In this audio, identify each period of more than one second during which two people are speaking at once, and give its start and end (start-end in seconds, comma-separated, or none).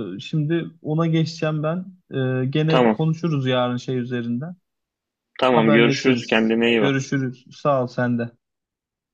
5.5-7.0